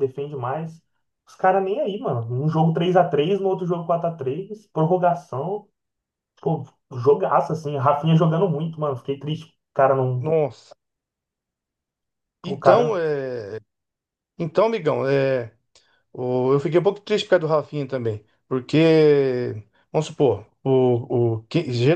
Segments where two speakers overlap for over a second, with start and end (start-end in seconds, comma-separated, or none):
none